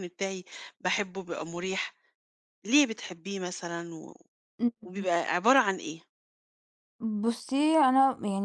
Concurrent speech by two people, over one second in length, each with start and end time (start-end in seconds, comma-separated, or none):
none